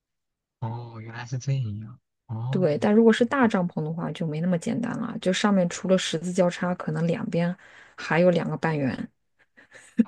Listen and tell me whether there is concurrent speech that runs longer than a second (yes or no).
no